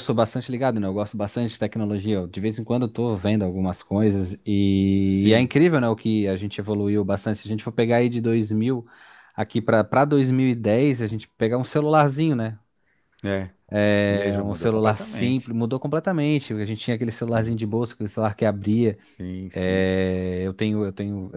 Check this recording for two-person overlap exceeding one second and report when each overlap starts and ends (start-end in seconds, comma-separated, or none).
14.3-15.5